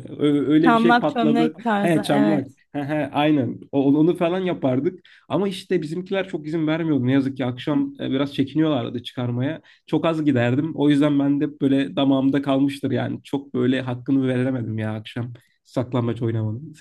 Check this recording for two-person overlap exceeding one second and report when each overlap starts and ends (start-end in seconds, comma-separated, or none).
0.6-2.6